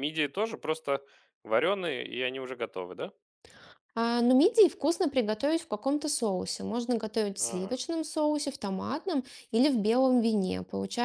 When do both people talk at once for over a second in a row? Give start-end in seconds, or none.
none